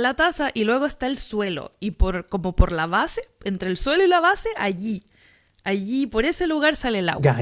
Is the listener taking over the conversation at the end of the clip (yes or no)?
yes